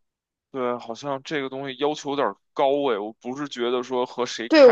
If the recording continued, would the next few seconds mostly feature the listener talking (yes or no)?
yes